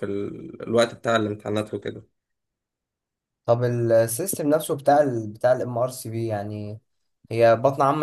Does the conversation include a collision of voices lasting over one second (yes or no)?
no